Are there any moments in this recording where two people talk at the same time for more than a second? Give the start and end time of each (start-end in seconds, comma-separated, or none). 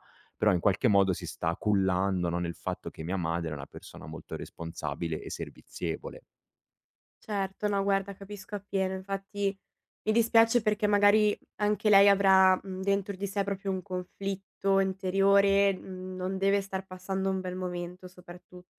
none